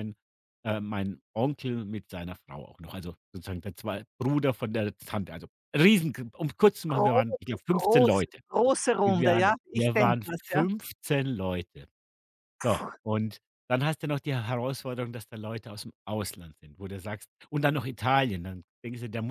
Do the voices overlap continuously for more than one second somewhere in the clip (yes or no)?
yes